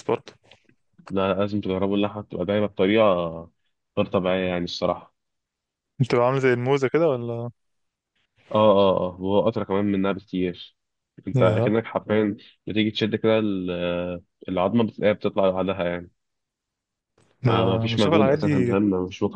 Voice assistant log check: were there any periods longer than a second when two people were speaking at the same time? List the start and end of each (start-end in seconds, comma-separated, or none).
17.5-18.8